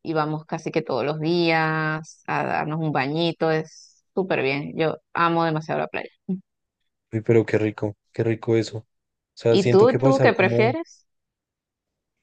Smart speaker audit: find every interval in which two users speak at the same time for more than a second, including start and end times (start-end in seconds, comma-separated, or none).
9.5-10.8